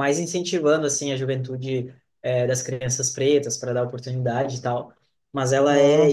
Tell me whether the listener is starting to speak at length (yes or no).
no